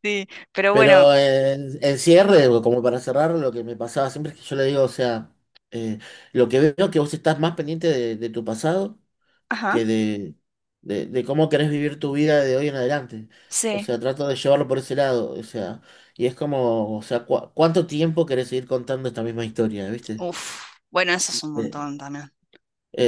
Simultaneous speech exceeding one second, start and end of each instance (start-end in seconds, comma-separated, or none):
none